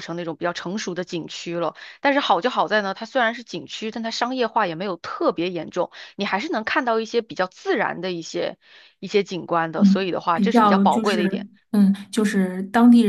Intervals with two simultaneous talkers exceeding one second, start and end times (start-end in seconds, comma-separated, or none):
9.8-11.5